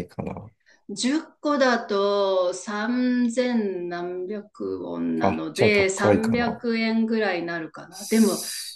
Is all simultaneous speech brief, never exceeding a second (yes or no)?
no